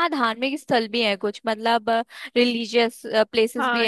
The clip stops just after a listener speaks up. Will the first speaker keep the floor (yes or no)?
no